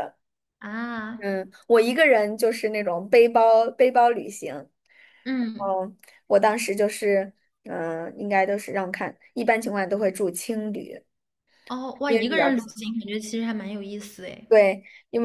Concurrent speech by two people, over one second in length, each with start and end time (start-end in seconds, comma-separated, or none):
none